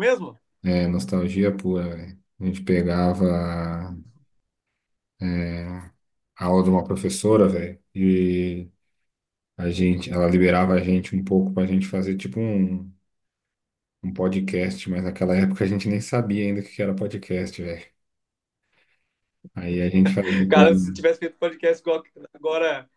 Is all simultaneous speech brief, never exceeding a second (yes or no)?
yes